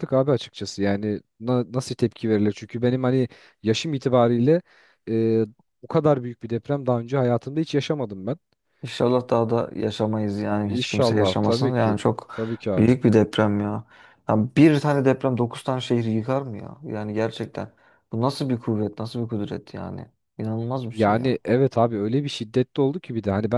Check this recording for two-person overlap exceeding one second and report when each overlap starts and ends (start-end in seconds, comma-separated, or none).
10.7-12.0